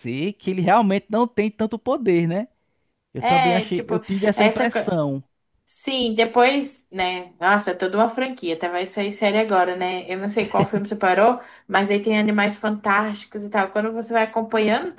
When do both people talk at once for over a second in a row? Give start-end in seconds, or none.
3.2-4.8